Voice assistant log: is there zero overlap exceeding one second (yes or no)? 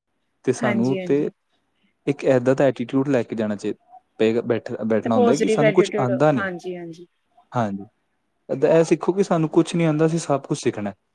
no